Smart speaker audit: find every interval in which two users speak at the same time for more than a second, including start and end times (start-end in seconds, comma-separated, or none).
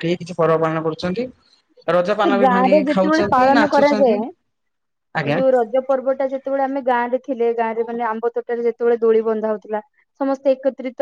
2.2-4.1